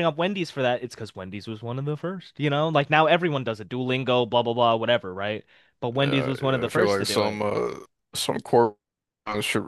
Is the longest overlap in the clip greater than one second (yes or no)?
yes